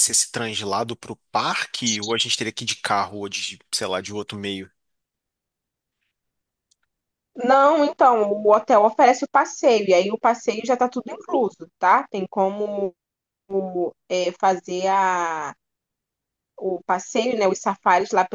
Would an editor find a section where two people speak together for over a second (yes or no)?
no